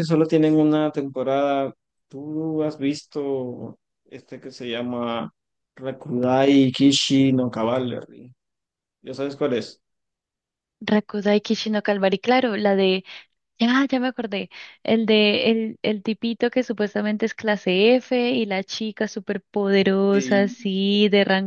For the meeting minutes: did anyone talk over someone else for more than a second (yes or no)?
no